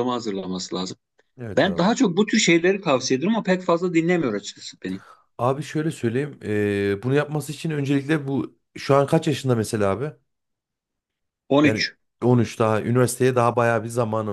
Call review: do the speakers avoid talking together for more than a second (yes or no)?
yes